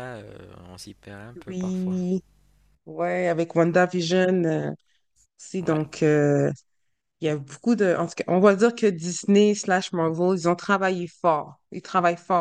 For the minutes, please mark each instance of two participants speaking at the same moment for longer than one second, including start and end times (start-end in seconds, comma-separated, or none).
none